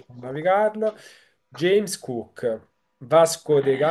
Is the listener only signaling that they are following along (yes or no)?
yes